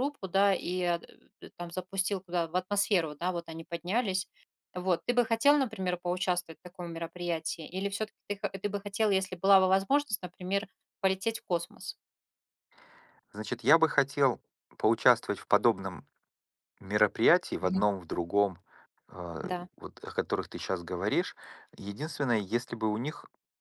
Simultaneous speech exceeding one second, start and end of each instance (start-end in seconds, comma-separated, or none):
none